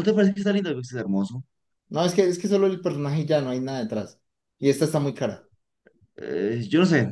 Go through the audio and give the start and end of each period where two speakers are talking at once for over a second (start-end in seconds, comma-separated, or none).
none